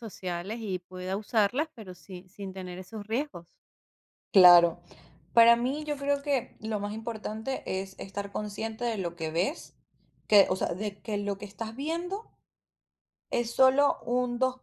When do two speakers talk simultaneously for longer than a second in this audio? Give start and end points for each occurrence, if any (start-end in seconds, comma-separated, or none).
none